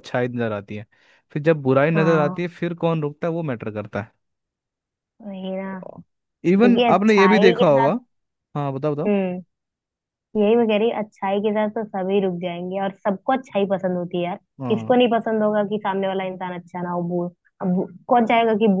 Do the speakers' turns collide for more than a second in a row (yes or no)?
yes